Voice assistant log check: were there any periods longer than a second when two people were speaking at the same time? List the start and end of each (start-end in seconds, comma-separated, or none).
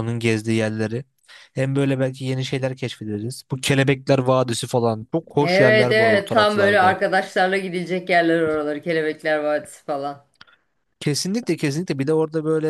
5.4-7.0